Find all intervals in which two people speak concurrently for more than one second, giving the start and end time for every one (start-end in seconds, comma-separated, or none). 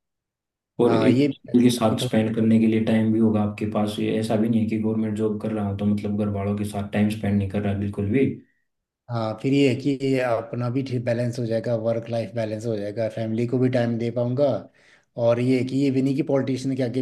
0.9-2.2